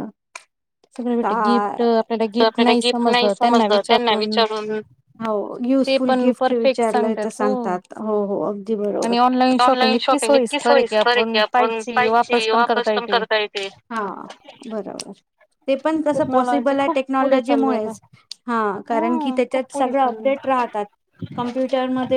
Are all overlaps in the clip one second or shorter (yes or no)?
no